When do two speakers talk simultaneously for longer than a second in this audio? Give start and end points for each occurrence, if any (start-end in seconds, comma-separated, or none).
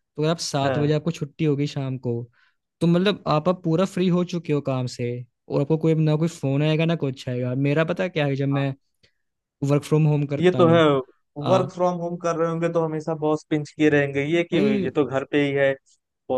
none